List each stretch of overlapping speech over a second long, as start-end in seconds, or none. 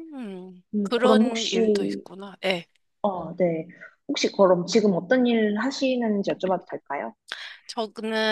0.7-2.0